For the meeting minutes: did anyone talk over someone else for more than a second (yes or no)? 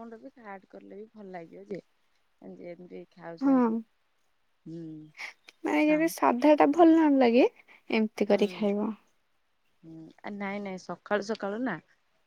no